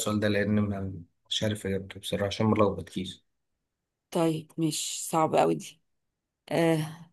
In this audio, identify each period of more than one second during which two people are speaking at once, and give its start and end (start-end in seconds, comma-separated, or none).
none